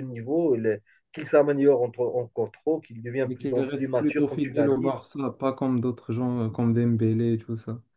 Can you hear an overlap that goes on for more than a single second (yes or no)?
yes